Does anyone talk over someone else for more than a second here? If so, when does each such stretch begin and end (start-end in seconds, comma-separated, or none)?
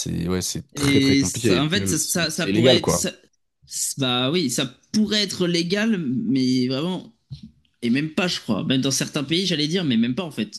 0.8-3.0